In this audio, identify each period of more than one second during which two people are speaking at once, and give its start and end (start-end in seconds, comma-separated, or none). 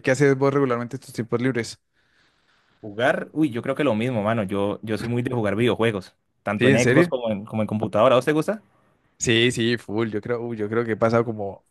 none